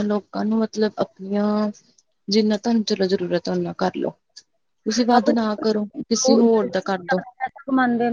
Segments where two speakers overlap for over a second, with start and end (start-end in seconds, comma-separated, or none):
5.1-6.7